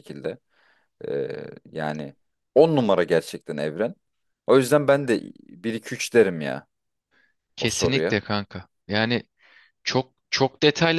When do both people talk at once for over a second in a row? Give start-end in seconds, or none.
none